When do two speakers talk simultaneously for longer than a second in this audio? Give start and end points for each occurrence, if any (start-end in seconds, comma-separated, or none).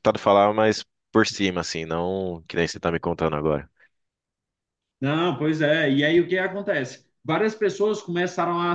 none